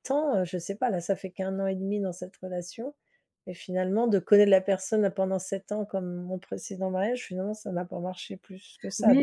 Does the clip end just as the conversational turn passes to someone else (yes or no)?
yes